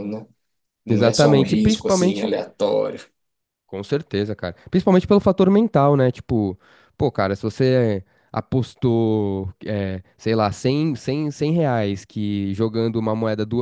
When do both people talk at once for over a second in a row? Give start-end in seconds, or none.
0.9-2.3